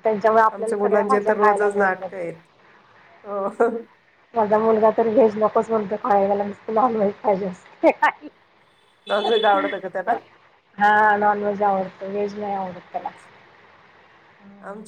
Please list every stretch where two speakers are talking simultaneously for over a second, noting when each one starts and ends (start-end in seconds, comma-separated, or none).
0.5-2.1